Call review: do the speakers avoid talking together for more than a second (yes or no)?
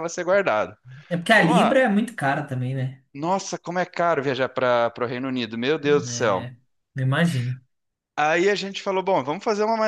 yes